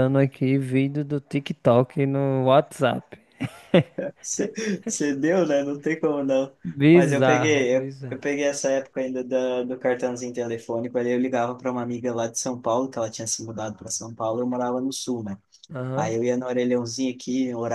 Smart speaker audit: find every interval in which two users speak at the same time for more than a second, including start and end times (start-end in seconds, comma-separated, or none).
6.9-8.2